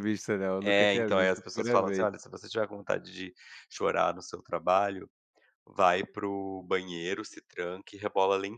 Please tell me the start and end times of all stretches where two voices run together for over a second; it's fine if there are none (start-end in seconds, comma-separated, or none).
0.6-2.1